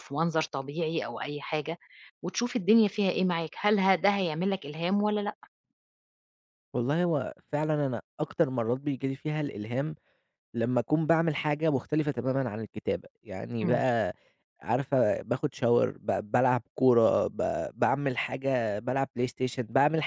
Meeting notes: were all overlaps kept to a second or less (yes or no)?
yes